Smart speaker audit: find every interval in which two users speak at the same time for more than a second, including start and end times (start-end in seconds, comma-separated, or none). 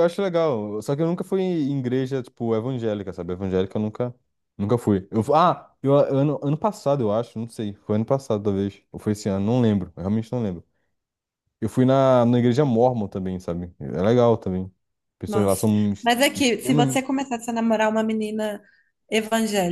15.3-17.0